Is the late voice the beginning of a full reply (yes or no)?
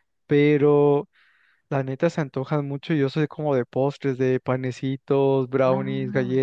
no